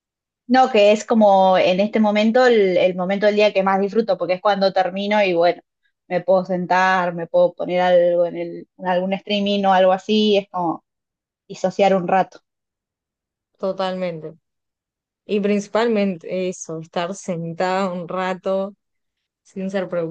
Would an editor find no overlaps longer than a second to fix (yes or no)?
yes